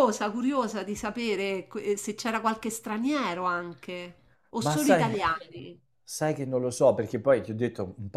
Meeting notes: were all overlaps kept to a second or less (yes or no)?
yes